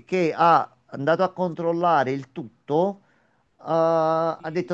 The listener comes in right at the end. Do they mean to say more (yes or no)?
no